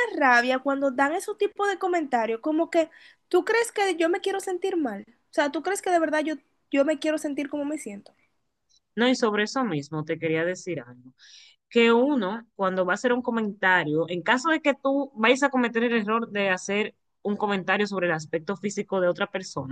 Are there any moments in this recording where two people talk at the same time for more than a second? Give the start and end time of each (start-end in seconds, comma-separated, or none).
none